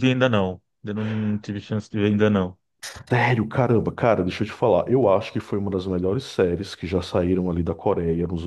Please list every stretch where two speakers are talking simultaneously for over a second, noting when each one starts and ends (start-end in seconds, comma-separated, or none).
none